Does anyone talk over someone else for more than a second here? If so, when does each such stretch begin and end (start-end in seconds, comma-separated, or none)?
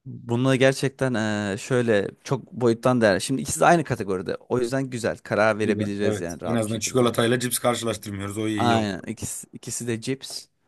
5.6-7.1